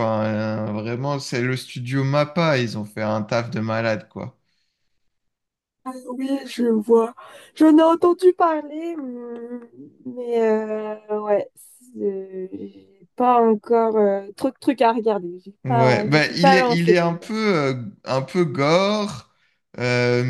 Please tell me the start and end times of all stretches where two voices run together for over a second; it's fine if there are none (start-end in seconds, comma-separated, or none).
15.6-17.0